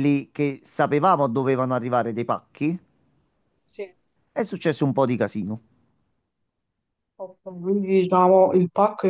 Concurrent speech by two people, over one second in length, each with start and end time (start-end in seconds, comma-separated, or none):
none